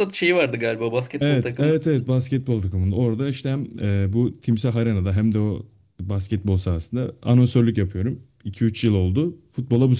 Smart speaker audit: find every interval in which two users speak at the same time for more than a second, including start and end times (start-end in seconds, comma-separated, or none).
none